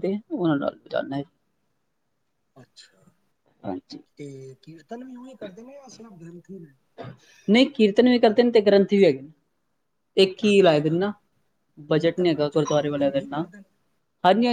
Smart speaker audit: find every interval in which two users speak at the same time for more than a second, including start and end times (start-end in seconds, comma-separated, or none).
11.9-13.5